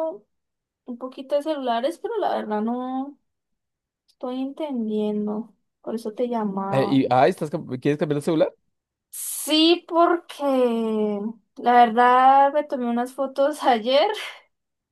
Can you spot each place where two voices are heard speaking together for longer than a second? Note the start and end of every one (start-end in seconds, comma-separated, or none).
none